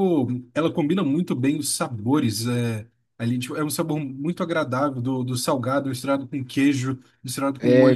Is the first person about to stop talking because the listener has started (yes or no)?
no